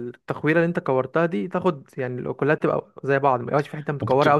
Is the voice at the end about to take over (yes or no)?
yes